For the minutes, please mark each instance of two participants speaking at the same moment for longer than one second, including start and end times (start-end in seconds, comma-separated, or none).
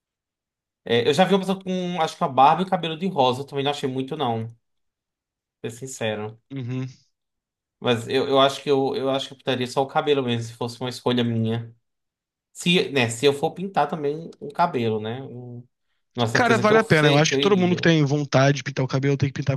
16.3-17.9